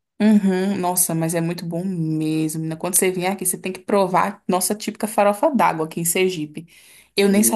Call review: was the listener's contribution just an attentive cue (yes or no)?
no